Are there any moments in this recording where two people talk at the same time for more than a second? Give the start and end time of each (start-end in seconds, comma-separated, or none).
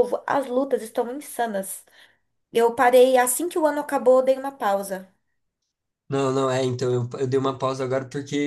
none